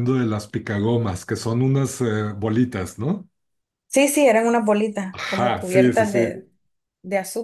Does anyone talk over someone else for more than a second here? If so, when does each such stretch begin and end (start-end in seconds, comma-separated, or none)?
5.1-6.4